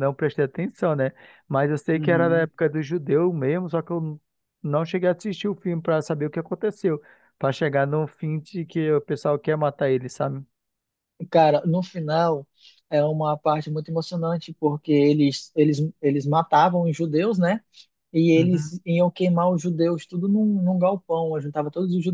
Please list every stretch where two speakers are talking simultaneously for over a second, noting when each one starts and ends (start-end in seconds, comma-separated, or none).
none